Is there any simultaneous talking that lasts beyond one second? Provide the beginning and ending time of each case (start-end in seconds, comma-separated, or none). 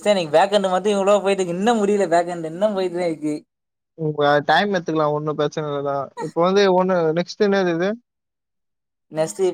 none